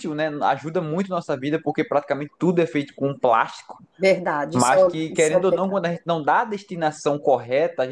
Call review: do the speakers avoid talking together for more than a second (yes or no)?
no